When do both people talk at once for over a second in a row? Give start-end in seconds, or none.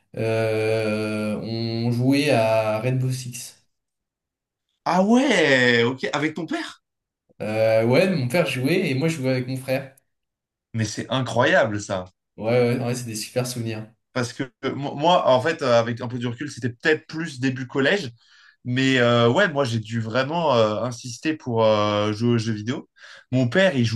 none